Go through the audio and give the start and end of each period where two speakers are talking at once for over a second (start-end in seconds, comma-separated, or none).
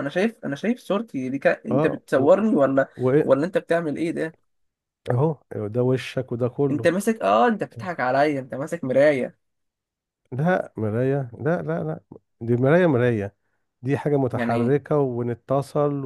none